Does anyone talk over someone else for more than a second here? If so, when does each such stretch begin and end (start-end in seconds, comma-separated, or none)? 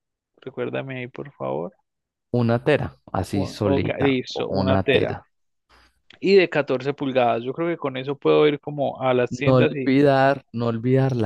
3.3-5.2